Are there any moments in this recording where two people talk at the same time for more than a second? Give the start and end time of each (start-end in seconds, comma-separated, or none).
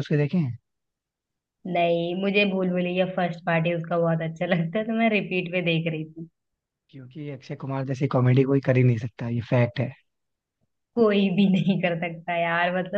none